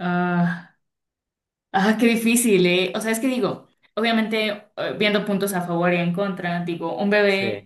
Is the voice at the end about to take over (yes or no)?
no